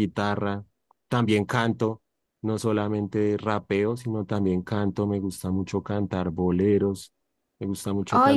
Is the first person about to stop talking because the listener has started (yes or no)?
yes